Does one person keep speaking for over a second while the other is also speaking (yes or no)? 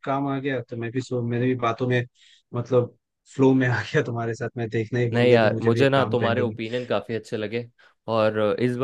yes